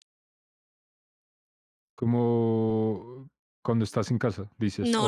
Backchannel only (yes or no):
no